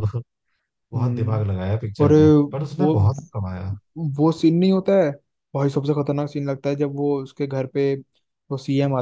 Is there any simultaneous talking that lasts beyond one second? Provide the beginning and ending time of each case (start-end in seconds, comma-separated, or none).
none